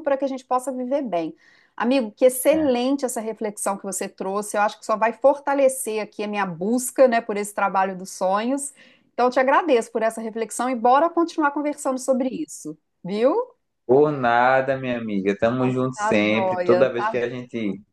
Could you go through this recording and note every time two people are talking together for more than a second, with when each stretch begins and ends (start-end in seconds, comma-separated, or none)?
15.9-17.1